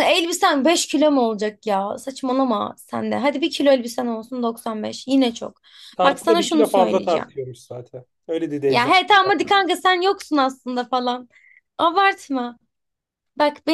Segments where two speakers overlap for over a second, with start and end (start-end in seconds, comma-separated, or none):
6.0-7.3